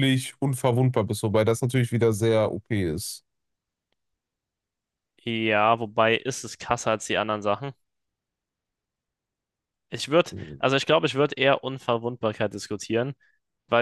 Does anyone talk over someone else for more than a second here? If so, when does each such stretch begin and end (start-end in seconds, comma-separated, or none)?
none